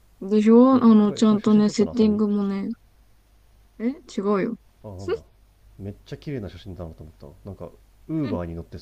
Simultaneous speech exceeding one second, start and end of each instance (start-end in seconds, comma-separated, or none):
0.7-2.2